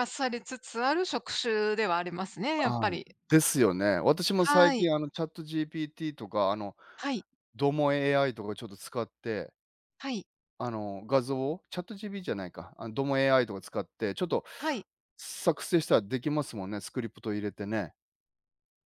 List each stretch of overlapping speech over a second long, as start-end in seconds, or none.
none